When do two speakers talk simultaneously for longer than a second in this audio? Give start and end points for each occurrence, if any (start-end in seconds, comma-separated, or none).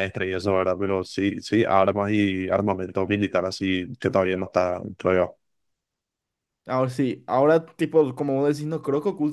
none